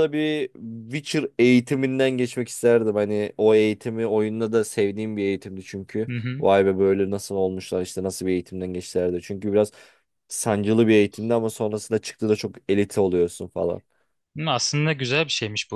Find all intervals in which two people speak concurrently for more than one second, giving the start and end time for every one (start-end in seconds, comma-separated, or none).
none